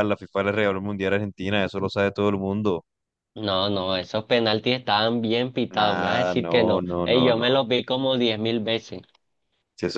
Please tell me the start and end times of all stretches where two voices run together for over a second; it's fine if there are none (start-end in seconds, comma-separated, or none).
5.7-7.5